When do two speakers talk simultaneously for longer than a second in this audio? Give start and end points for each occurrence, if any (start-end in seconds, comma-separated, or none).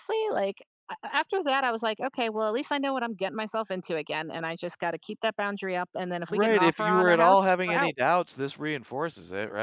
6.3-8.0